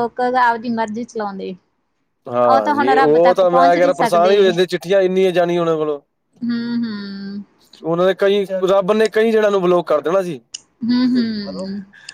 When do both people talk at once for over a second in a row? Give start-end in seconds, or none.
2.5-4.3